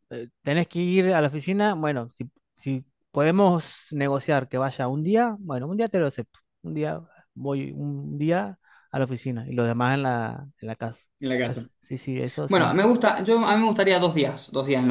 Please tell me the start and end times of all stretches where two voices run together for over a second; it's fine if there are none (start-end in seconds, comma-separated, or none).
none